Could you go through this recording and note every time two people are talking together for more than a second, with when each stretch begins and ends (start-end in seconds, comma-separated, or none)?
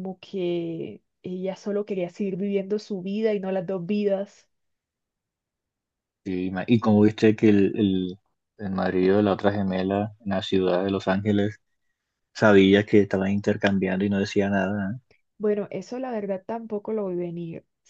none